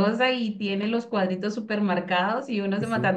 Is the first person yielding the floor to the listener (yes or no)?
no